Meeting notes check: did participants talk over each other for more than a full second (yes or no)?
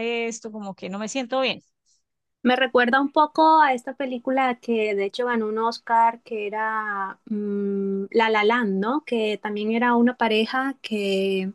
no